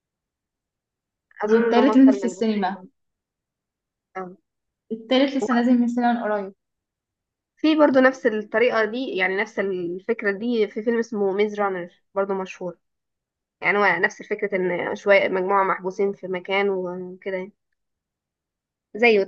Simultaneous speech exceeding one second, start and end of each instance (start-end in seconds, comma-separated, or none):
1.4-2.8